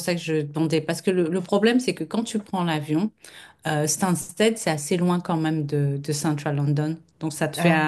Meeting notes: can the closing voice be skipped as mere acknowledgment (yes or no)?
yes